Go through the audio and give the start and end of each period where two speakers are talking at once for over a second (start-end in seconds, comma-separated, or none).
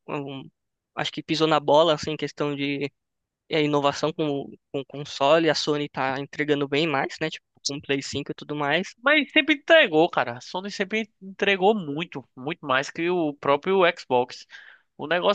none